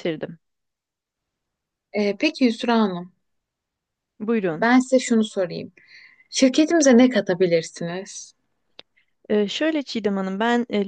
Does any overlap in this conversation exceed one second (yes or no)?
no